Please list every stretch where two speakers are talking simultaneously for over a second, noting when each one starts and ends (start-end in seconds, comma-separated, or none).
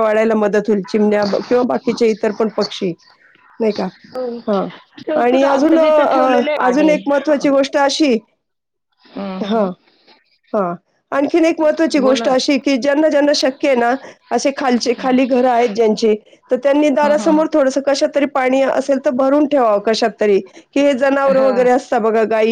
5.2-6.9